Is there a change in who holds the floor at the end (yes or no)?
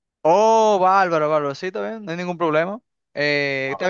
no